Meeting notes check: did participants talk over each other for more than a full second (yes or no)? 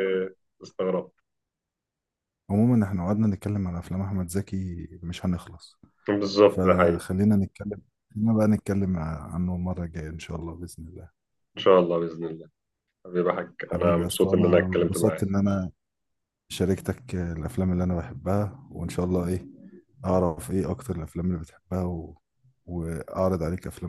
yes